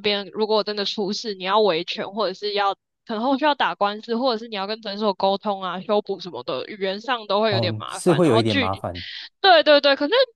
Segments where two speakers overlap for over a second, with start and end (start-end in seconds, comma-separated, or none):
7.5-8.8